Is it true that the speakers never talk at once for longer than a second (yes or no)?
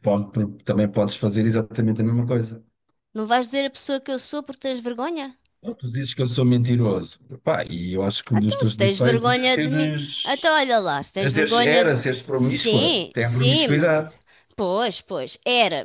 no